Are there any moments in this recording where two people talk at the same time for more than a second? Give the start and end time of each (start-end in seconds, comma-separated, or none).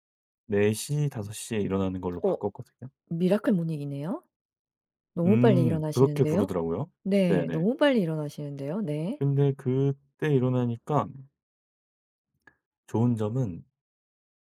5.3-6.5